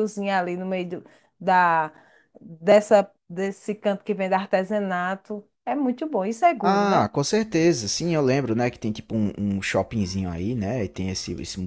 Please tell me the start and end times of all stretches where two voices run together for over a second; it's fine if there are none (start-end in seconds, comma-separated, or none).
none